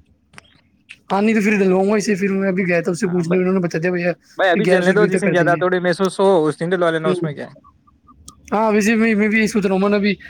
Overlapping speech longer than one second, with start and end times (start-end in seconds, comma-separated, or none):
4.4-5.6